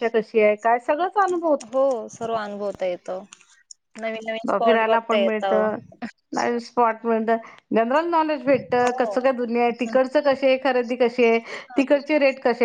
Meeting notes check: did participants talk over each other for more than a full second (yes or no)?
no